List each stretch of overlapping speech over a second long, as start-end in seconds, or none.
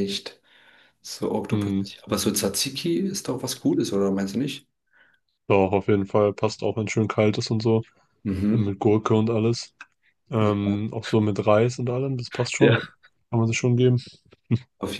none